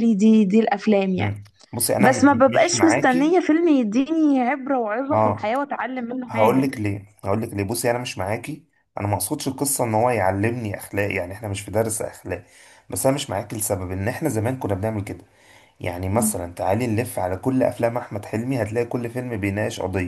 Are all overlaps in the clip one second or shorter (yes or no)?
no